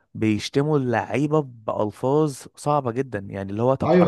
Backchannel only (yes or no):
no